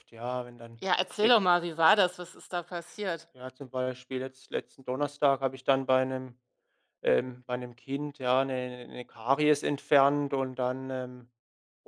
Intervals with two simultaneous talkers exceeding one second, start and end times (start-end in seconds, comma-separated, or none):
none